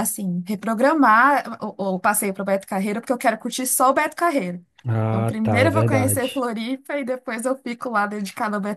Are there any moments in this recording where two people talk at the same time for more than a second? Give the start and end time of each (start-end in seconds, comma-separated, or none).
5.1-6.4